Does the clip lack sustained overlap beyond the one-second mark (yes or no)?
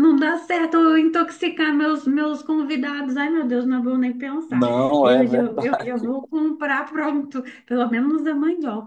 no